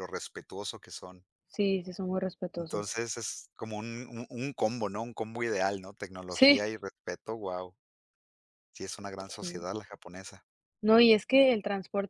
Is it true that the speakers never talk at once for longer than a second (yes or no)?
yes